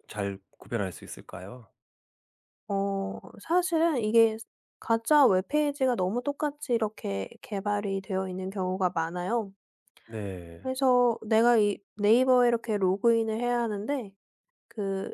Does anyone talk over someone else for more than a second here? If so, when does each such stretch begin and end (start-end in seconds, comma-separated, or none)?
none